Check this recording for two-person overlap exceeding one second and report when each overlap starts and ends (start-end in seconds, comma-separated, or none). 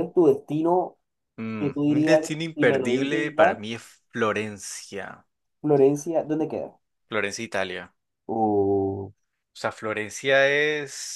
1.6-3.6